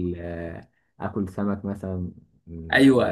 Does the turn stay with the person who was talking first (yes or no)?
no